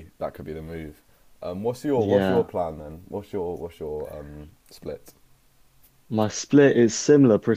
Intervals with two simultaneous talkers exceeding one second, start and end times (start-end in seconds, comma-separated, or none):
none